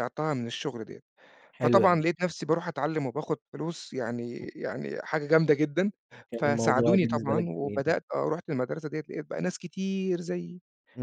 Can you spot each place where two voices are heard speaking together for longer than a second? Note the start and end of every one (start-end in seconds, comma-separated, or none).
6.3-8.0